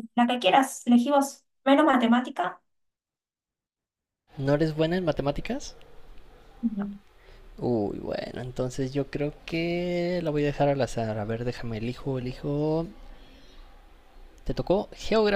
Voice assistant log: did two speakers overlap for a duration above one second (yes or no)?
no